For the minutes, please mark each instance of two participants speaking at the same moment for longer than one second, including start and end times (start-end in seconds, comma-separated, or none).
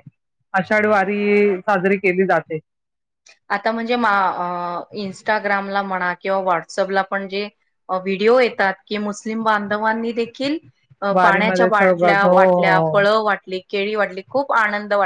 11.1-13.1